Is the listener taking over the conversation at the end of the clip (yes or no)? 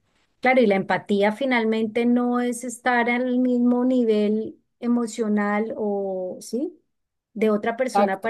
no